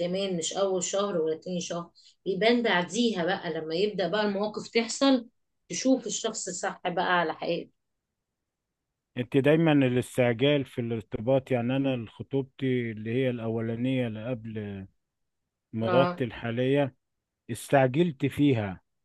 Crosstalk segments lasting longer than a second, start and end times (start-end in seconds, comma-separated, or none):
none